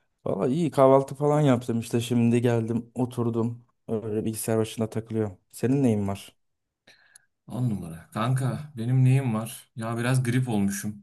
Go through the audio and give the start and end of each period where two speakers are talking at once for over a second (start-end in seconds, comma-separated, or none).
none